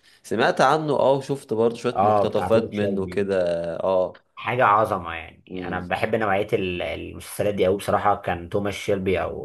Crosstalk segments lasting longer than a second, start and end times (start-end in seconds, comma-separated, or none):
1.9-3.3